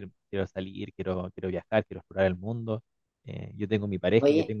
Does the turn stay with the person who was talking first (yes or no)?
yes